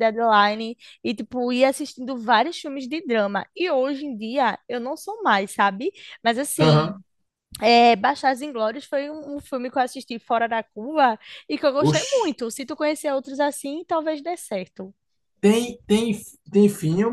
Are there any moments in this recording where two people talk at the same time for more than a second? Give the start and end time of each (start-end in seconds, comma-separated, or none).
none